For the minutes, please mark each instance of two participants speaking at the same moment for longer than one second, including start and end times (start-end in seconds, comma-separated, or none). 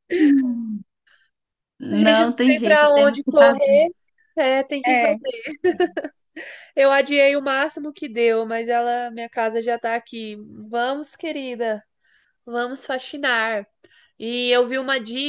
1.9-3.8